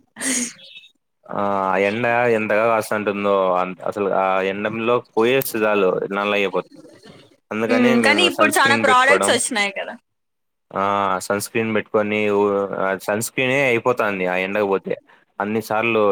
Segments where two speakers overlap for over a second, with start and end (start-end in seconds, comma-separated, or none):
7.7-9.3